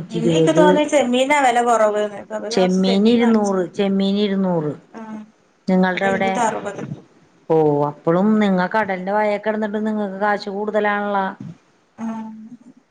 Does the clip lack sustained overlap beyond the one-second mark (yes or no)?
yes